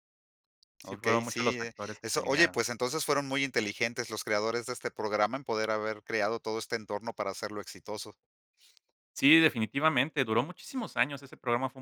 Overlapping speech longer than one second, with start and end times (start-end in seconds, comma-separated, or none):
0.8-2.6